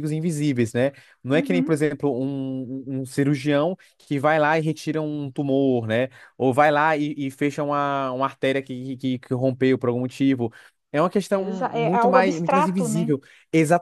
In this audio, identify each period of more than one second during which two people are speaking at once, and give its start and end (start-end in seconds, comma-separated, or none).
11.3-13.1